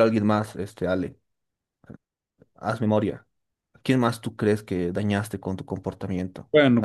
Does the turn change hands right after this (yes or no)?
yes